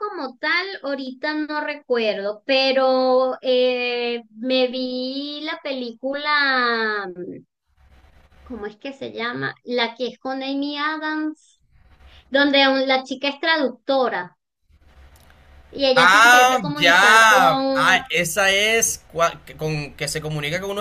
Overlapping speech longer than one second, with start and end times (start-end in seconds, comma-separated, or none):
15.9-18.0